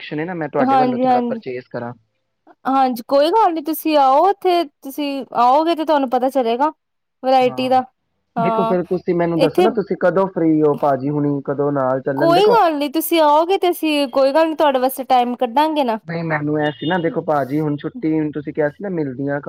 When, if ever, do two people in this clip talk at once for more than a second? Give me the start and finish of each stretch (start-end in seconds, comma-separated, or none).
none